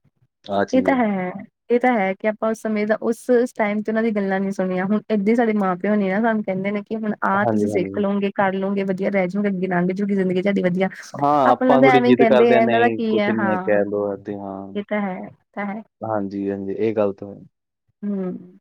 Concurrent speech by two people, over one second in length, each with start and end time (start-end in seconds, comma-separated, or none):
11.5-13.8